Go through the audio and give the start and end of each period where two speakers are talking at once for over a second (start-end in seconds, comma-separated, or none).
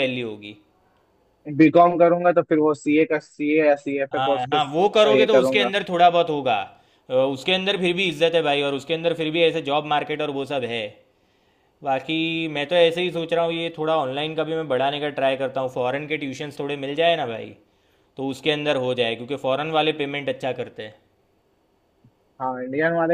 4.1-5.7